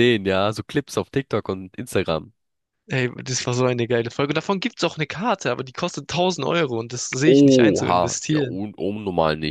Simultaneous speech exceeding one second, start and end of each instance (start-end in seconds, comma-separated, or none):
7.3-8.6